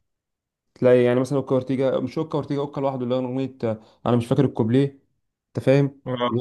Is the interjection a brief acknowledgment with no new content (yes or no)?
no